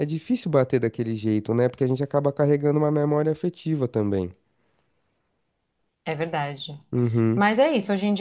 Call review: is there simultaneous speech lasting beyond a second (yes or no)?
no